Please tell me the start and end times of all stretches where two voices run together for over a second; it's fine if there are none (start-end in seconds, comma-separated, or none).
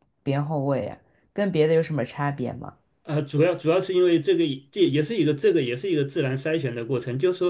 none